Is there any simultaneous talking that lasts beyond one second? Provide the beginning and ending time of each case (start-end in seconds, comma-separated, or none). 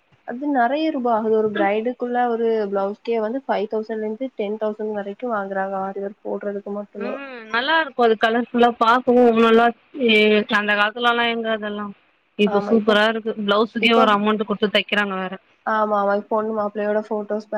none